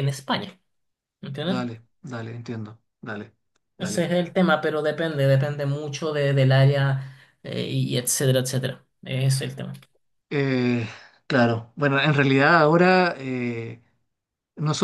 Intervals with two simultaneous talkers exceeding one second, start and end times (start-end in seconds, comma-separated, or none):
none